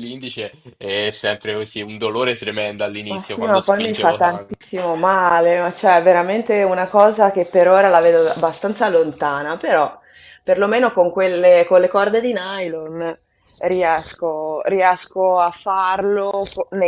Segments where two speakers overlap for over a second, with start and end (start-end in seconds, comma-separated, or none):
3.1-4.7